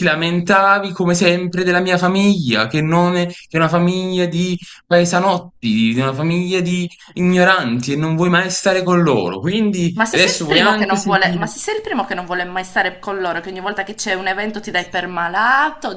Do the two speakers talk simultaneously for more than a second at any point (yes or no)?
yes